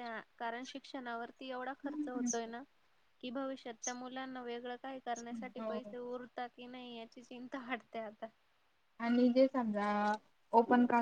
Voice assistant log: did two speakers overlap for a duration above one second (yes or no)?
no